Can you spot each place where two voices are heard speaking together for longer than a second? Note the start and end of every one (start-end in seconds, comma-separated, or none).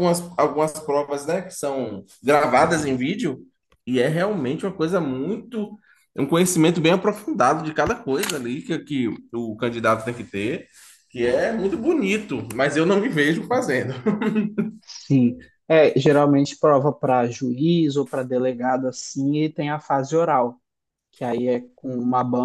none